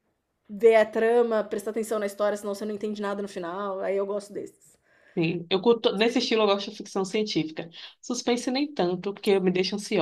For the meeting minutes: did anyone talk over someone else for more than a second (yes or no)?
no